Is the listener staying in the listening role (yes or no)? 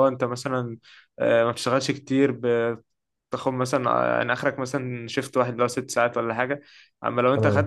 yes